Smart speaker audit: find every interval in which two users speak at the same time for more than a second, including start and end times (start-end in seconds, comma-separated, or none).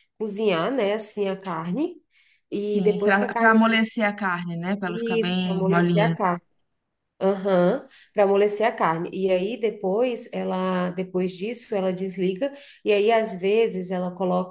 2.5-3.8, 4.8-6.2